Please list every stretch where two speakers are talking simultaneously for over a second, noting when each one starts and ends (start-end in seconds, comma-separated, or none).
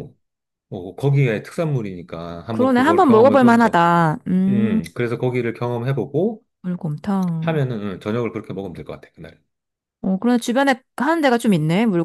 2.5-3.8